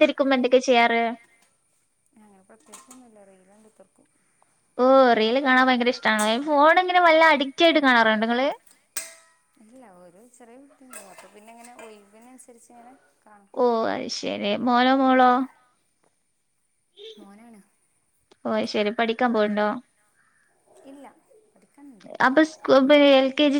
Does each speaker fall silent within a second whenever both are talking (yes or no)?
yes